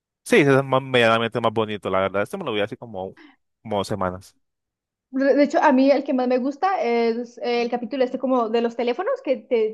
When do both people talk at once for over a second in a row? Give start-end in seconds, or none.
none